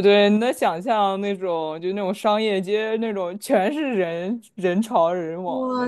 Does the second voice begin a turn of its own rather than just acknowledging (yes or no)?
yes